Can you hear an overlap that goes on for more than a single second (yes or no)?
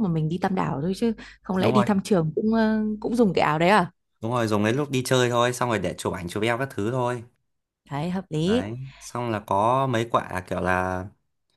no